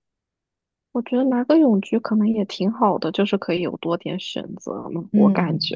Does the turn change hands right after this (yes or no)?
yes